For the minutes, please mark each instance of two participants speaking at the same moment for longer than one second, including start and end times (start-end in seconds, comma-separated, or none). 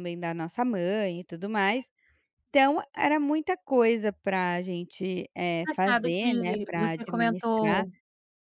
5.6-7.8